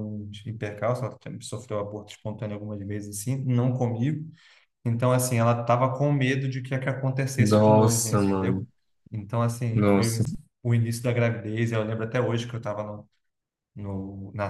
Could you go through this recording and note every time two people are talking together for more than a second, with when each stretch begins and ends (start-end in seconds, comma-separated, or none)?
7.4-8.7